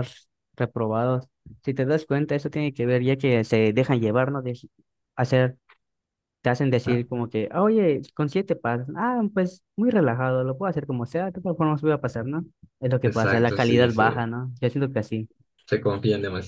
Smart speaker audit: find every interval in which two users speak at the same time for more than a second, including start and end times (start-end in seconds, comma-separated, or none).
13.0-14.3